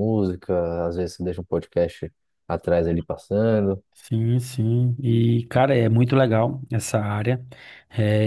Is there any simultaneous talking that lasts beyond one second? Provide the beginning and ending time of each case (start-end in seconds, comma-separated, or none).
none